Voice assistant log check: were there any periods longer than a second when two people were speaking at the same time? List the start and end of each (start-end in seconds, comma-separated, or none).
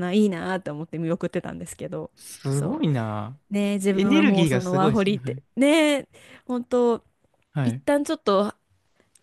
3.9-5.4